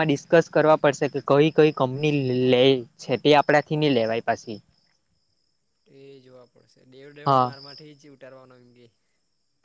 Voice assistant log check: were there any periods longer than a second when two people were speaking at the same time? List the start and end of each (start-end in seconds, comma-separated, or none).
none